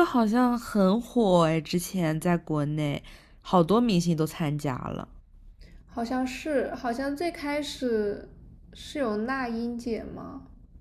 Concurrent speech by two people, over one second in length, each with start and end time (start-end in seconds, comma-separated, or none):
none